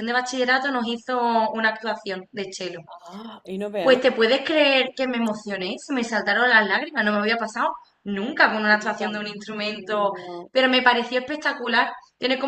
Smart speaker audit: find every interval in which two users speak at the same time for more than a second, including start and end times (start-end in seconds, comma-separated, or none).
none